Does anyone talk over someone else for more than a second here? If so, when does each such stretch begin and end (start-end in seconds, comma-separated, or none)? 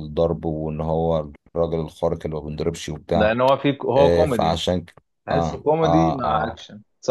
5.3-6.6